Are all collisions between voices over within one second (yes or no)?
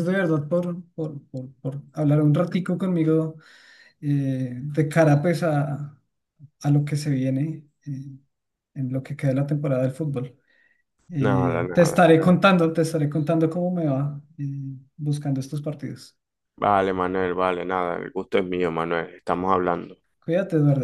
no